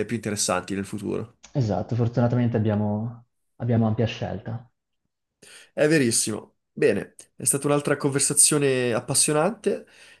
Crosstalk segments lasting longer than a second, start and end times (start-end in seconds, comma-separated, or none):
none